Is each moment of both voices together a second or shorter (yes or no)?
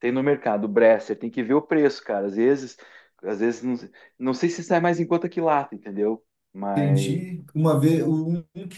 yes